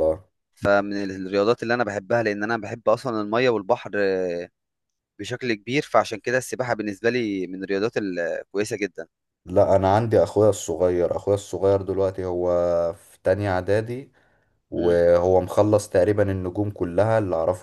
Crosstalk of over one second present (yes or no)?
no